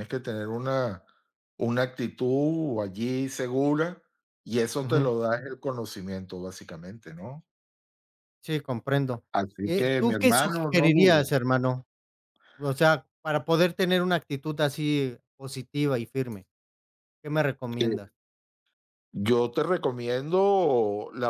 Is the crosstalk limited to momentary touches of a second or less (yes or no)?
no